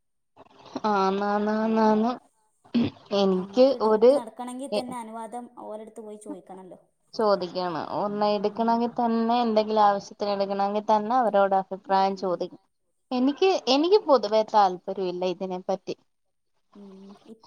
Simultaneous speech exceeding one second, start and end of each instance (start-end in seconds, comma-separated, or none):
none